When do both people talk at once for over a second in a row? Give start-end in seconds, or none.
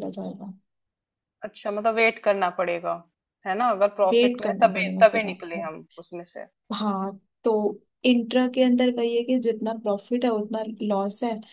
4.1-5.7